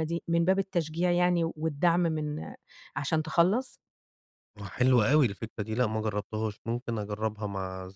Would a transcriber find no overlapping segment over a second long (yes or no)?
yes